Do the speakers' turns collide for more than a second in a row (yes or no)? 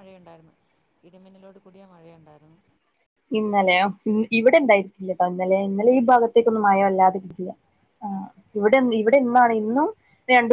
no